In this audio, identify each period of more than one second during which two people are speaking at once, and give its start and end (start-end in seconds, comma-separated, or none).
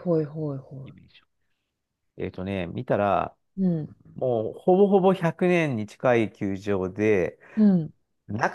none